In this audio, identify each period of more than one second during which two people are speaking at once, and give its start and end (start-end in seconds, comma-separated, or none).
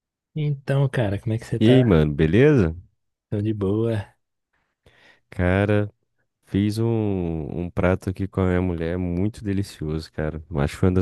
none